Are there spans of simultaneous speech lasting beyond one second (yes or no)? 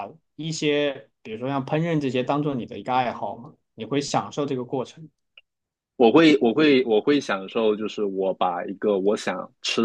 no